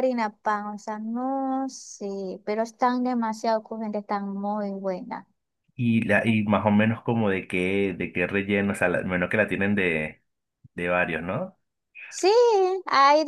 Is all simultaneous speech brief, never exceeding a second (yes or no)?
yes